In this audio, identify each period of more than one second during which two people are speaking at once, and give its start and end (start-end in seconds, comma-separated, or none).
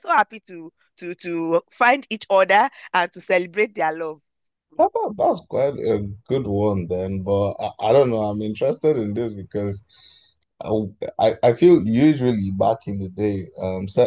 none